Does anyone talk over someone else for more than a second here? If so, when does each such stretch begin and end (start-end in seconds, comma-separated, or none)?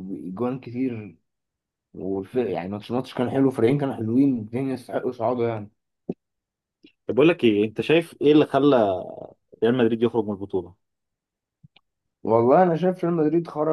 none